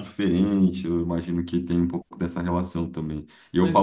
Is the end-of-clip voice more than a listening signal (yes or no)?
no